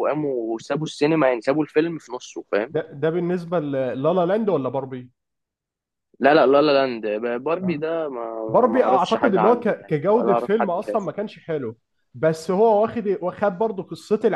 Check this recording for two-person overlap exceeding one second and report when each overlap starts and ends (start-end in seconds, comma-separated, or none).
8.5-11.1